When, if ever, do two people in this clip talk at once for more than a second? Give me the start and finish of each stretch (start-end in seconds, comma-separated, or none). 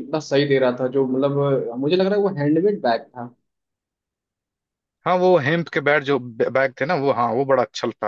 none